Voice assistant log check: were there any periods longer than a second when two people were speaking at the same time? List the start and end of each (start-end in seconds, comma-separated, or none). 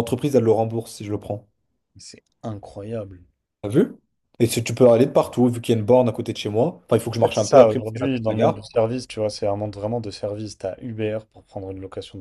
7.2-8.6